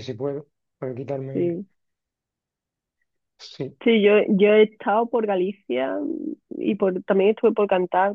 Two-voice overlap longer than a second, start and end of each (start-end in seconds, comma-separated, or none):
none